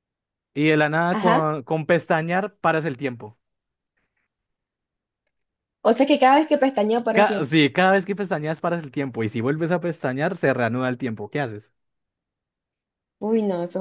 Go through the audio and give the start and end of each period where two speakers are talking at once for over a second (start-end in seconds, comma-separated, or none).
none